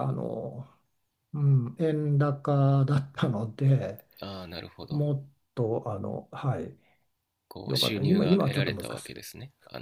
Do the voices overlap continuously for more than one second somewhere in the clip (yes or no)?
yes